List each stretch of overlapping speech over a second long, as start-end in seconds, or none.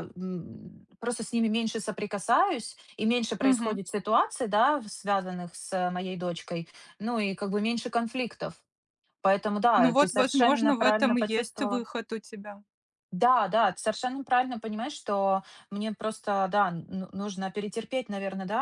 9.7-11.8